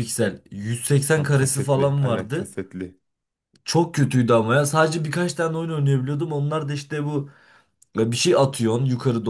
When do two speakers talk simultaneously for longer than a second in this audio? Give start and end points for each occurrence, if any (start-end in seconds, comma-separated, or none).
1.1-2.5